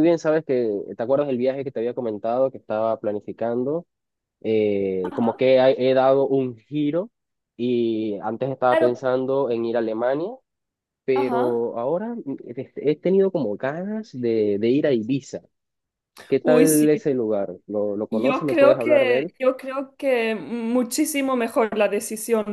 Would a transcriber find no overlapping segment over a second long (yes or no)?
no